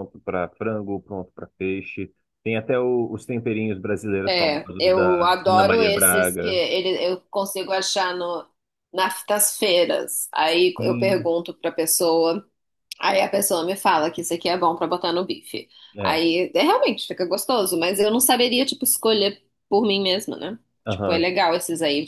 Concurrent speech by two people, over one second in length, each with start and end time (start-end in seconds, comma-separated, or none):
4.2-6.6